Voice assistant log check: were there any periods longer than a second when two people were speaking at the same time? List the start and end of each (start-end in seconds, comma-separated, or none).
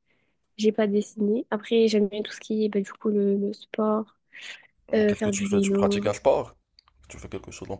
5.0-6.2